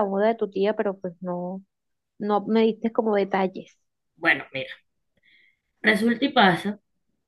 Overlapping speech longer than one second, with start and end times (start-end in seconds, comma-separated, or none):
none